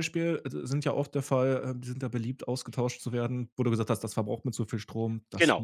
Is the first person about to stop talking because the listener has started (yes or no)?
yes